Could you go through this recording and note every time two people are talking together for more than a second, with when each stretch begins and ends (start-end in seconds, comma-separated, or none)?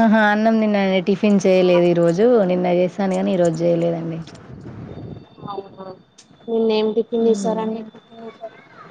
none